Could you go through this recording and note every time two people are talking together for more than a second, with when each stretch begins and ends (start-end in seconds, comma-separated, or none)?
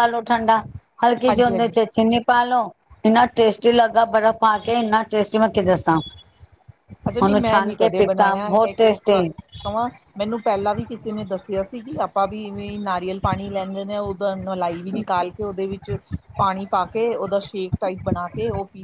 7.2-9.2